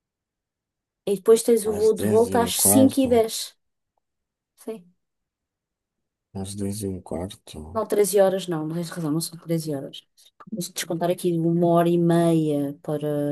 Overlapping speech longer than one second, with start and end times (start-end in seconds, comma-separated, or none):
1.6-3.3